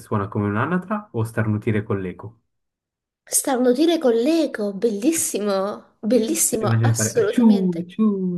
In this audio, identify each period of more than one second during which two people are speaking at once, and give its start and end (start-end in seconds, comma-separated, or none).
6.1-7.8